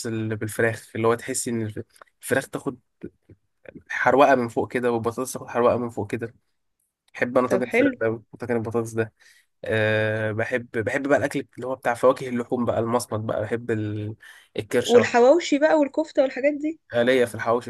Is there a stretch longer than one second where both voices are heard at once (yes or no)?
no